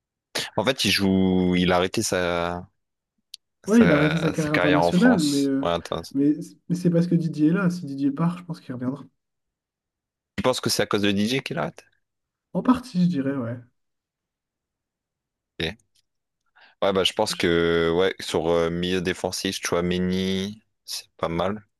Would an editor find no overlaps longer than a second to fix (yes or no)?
no